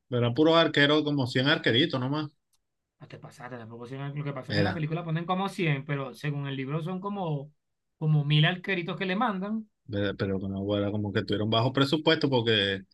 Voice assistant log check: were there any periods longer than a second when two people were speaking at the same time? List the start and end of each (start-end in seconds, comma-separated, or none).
none